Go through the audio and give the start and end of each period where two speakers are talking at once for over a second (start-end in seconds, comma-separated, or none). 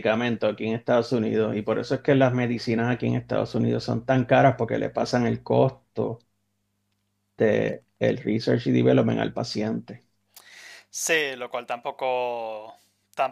none